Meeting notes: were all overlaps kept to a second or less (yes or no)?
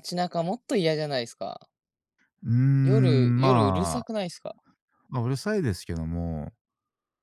no